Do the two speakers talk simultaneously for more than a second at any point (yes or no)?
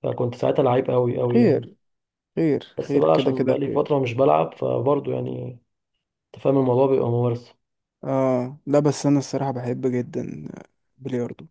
yes